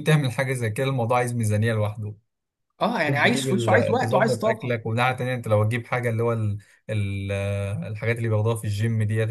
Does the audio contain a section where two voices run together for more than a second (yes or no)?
yes